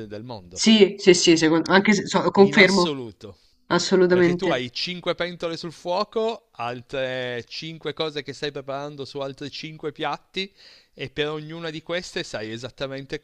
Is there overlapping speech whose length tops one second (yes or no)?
no